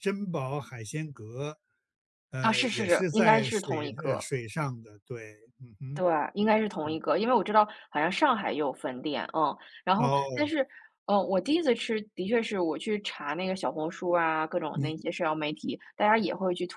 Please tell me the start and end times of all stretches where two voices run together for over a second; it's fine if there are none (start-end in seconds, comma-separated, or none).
2.4-4.3